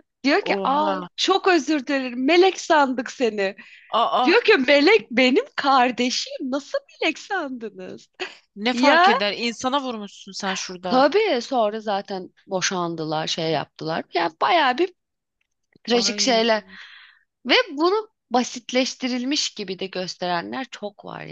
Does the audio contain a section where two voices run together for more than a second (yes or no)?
no